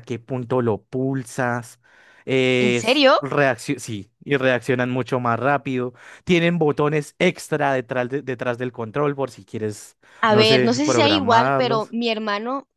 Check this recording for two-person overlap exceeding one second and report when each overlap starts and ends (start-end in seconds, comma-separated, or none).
10.2-11.9